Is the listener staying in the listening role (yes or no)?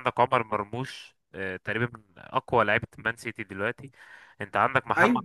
yes